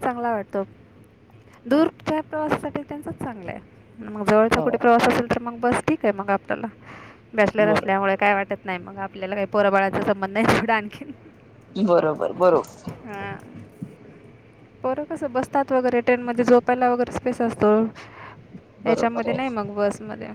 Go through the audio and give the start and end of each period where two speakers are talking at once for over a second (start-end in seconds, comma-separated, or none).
none